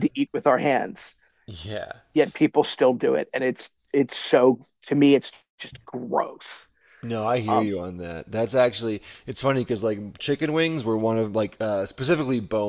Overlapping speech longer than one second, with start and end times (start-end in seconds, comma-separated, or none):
none